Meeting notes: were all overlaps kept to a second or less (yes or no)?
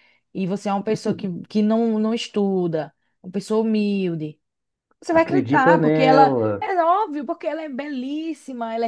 no